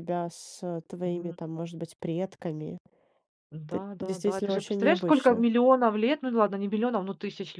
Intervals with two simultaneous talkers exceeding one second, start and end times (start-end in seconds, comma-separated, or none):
3.7-5.5